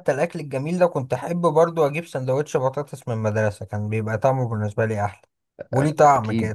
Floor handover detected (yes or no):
yes